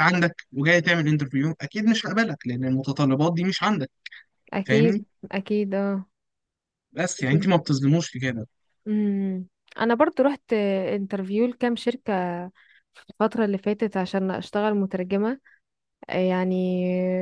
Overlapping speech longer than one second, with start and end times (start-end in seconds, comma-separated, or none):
none